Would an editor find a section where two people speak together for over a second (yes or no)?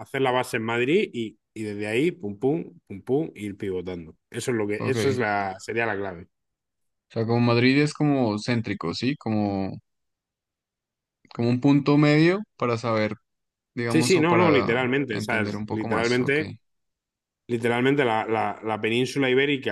yes